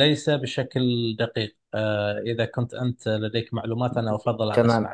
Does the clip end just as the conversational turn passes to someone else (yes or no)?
yes